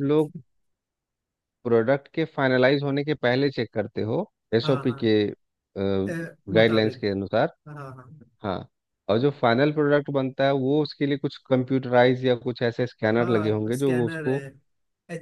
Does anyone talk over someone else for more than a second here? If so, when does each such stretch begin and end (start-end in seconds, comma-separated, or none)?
13.2-14.4